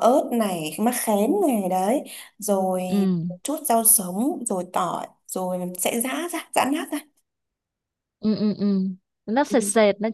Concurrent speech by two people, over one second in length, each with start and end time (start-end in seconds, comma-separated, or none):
none